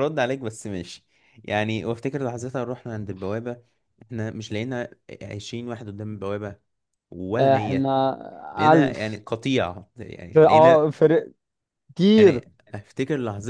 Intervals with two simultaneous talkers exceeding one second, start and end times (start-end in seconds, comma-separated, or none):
none